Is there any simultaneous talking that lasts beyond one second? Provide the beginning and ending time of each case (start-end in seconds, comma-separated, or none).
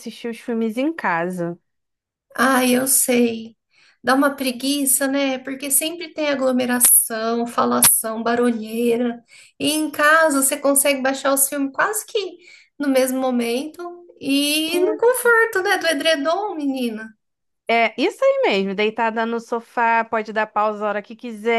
none